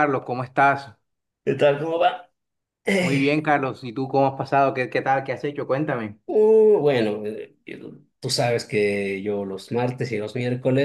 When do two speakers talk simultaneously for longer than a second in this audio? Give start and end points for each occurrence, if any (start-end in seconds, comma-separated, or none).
none